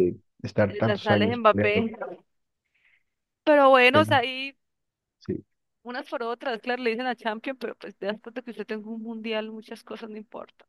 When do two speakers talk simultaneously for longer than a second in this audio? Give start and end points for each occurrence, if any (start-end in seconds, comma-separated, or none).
0.7-1.9